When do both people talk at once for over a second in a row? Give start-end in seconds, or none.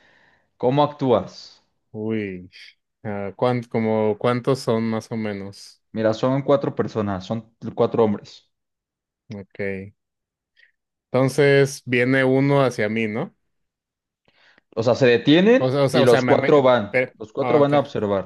15.6-17.7